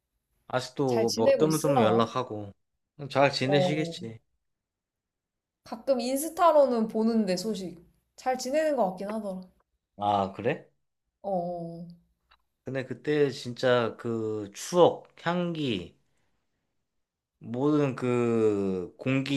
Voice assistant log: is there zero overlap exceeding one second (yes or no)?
no